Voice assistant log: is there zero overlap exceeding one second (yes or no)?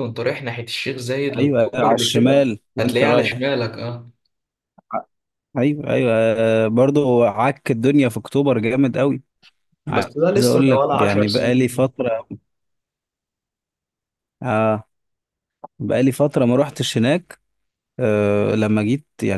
no